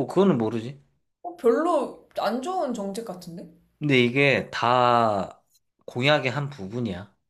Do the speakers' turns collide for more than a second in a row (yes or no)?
no